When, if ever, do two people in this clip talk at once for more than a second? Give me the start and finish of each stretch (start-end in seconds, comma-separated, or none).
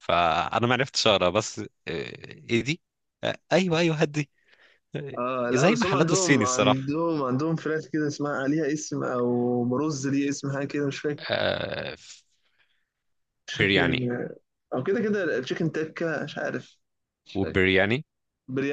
5.5-6.8